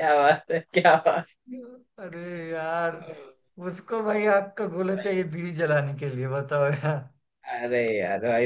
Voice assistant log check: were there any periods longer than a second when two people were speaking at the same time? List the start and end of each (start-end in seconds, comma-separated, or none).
none